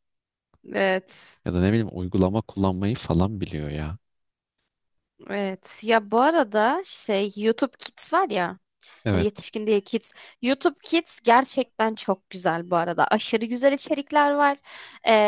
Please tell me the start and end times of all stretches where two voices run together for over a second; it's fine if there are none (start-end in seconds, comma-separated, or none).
none